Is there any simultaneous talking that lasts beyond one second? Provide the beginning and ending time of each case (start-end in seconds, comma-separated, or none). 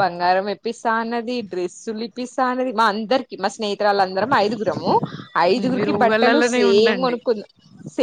5.6-7.2